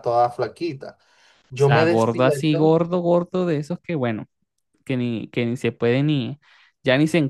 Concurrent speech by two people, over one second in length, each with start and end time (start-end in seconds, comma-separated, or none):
1.5-2.8